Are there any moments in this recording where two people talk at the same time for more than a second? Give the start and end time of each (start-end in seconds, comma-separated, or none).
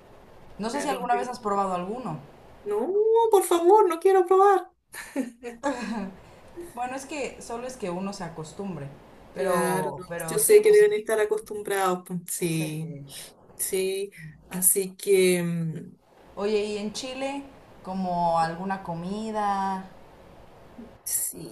9.3-10.8